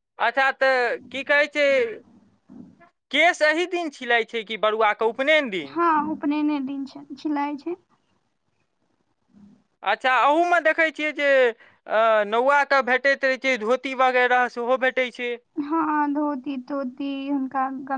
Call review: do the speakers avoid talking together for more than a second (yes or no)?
yes